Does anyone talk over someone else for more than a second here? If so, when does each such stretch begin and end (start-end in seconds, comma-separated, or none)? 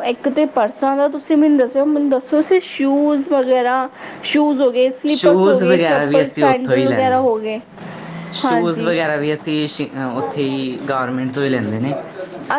5.2-7.3